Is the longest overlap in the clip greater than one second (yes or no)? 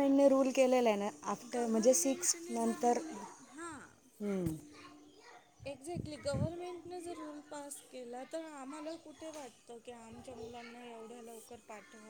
yes